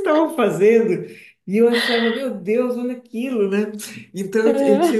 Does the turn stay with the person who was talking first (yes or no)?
yes